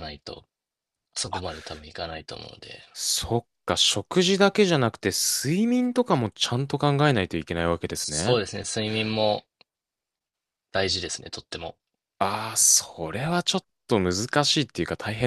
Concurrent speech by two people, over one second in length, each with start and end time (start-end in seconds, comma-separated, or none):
none